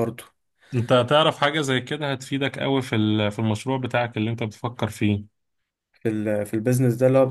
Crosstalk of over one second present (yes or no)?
no